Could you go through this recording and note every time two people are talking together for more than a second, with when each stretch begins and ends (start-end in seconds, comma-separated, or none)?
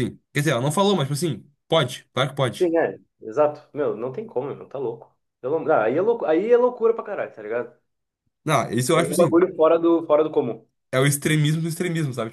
none